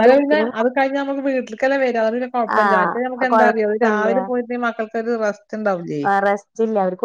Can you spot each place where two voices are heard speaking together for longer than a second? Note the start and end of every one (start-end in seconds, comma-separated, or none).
2.6-4.1